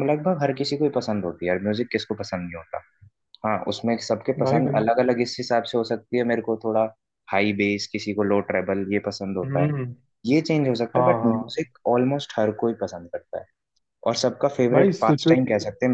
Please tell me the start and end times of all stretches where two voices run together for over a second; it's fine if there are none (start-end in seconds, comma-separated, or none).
none